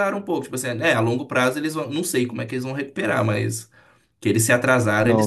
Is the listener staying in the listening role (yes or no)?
no